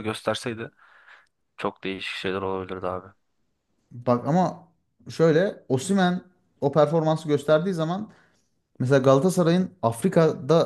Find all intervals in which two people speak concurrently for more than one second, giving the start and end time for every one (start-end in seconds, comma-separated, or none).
none